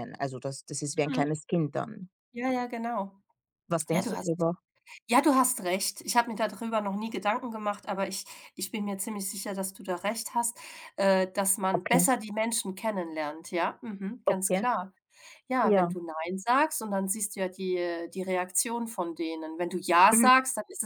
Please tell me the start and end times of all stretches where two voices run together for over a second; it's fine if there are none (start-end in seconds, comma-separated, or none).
none